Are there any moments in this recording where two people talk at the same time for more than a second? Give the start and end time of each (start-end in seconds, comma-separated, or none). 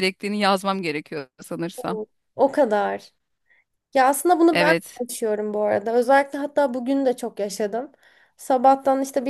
none